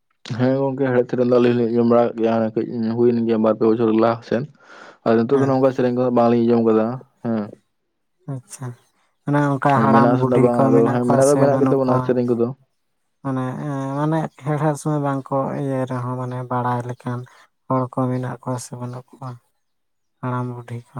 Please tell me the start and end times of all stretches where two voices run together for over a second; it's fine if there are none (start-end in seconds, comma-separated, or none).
9.7-12.0